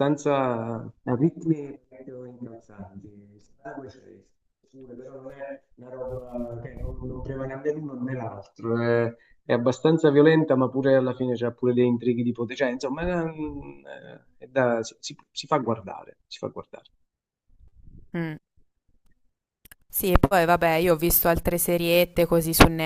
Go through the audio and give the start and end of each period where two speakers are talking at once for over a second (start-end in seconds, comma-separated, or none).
none